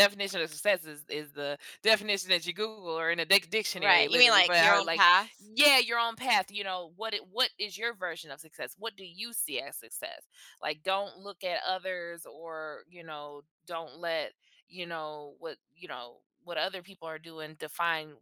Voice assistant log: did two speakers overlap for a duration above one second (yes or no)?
yes